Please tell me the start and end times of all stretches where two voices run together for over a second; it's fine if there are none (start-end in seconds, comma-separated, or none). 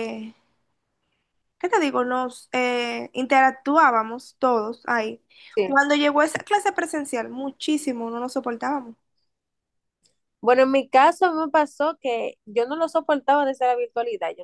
none